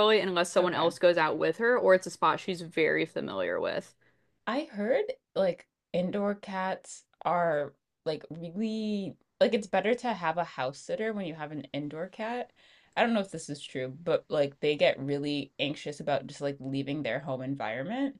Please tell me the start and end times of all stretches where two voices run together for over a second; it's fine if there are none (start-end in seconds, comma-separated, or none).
none